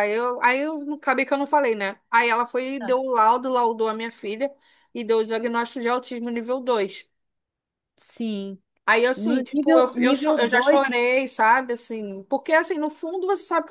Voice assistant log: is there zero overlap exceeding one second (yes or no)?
no